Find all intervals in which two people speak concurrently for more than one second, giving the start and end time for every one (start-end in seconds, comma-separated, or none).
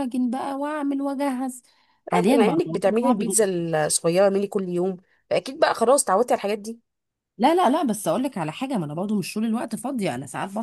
2.1-3.4